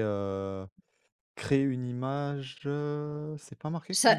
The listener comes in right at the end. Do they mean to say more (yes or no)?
yes